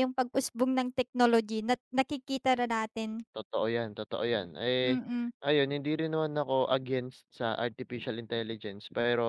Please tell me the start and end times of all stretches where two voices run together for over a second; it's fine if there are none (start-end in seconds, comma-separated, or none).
none